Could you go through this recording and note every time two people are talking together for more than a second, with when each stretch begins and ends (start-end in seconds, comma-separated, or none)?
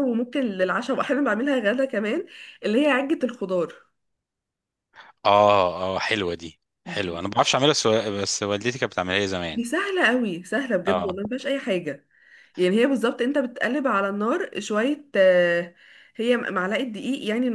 none